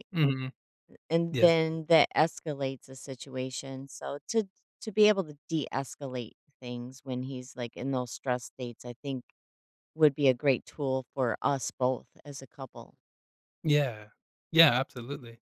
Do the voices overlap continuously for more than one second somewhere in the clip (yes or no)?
no